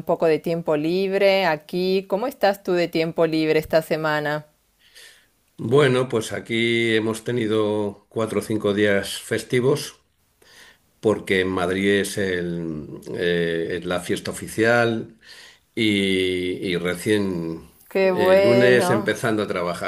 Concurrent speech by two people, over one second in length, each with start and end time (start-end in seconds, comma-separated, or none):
17.9-19.1